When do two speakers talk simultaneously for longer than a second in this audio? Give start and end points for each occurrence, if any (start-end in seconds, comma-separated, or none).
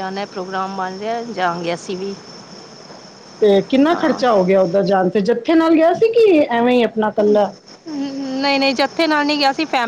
none